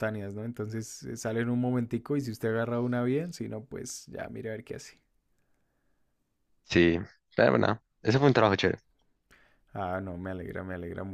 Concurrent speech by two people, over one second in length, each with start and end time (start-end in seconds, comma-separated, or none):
none